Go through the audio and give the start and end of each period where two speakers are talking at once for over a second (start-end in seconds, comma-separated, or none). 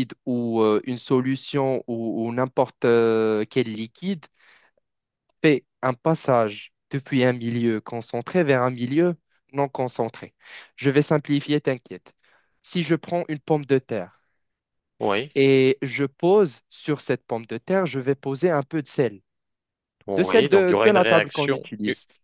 20.2-21.6